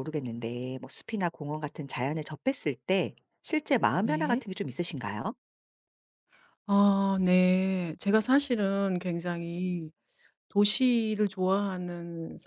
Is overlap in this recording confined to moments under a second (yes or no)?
yes